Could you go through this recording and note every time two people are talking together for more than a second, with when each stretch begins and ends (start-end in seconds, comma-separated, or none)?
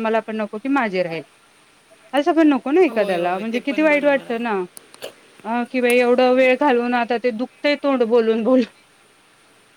2.9-4.6